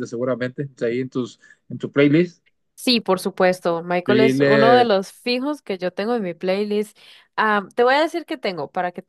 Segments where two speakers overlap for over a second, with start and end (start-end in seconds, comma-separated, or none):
none